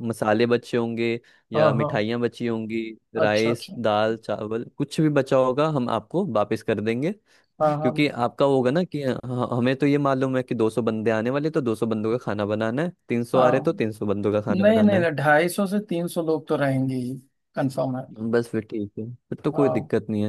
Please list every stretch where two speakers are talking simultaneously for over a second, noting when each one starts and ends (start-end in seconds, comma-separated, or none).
none